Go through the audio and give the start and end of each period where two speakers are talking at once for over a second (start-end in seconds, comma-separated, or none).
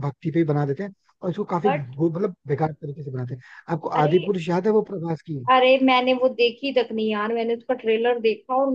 none